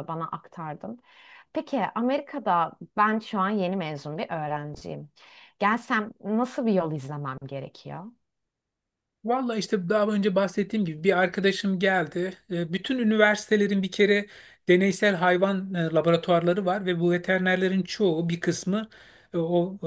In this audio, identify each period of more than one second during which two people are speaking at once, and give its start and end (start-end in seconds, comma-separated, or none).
none